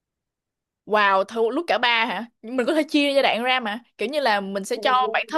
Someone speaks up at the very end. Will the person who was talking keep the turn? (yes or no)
yes